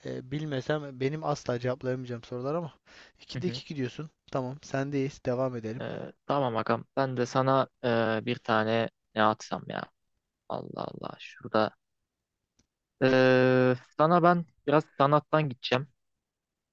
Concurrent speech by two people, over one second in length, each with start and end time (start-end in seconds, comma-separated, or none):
none